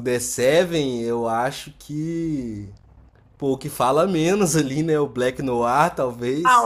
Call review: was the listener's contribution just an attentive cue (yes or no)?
no